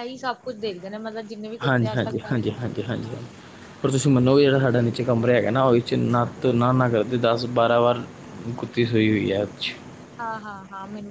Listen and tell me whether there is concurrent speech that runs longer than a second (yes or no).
yes